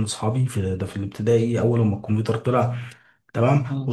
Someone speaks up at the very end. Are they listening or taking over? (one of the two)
listening